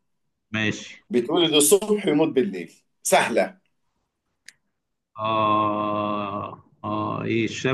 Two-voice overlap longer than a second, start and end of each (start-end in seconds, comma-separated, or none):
none